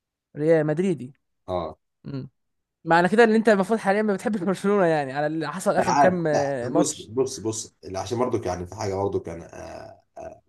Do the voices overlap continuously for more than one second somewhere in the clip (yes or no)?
yes